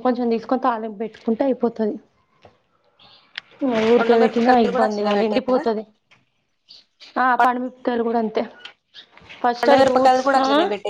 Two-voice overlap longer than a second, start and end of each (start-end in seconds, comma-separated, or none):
4.0-5.6